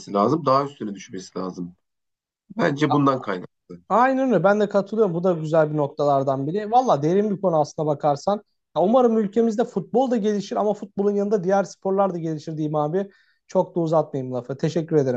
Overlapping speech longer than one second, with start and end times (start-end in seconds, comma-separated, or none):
none